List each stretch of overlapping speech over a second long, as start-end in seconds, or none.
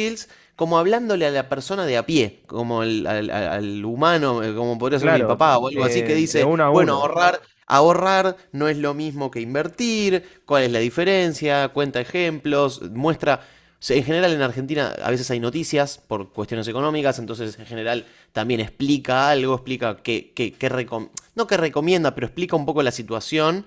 5.0-7.1